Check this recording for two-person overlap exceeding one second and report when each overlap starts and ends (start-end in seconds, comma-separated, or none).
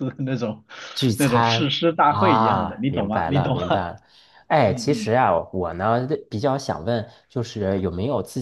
1.2-3.6